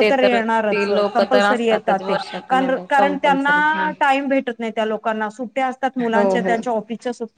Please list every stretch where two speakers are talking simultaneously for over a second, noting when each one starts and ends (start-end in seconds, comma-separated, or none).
0.7-3.9